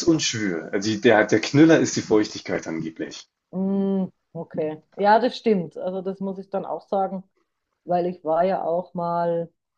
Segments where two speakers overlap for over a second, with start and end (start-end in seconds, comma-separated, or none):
none